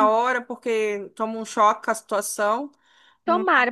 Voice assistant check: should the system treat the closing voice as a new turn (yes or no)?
yes